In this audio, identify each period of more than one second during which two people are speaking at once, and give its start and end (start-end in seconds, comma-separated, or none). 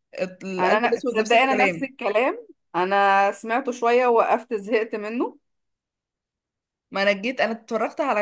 0.6-1.9